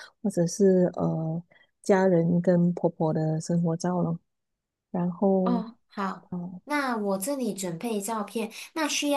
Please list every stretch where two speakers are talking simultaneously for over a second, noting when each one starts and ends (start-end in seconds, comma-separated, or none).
none